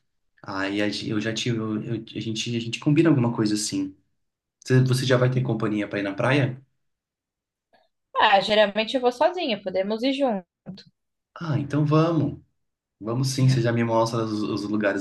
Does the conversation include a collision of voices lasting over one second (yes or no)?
no